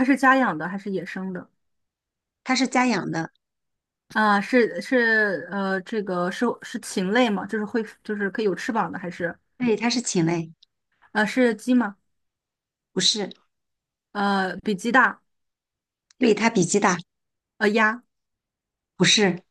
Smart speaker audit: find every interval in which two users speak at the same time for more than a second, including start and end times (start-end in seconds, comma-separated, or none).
none